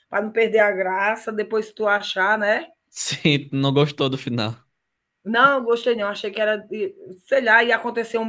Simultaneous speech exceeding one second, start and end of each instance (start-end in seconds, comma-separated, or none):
none